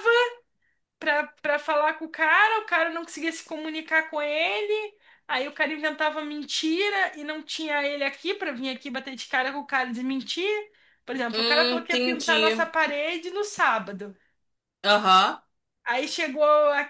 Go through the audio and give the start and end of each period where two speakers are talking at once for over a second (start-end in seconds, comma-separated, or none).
11.3-12.7